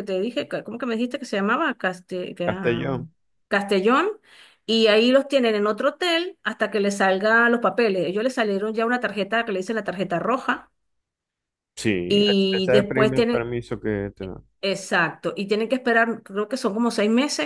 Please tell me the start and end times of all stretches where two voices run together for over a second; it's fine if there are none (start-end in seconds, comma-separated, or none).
12.1-13.5